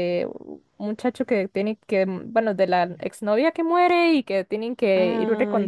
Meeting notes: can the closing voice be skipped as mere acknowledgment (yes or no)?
yes